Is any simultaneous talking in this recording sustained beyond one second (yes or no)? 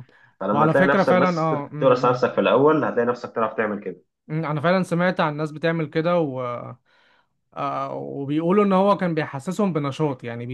yes